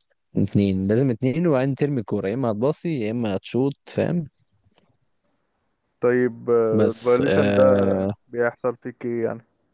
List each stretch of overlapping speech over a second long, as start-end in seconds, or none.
6.7-8.1